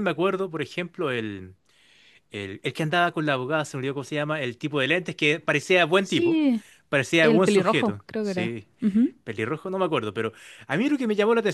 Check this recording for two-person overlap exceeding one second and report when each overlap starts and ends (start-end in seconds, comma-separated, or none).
7.2-8.7